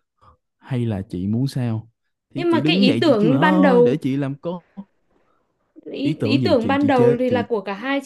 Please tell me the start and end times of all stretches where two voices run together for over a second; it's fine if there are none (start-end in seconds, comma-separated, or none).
2.3-4.0, 6.0-7.4